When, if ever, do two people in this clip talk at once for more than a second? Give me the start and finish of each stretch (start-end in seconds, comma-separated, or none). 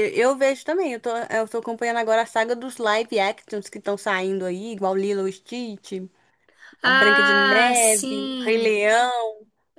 6.8-8.8